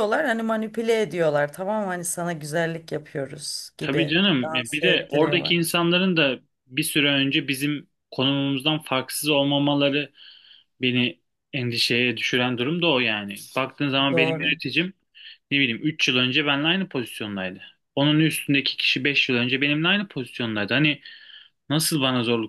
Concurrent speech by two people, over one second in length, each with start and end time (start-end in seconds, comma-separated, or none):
3.8-5.5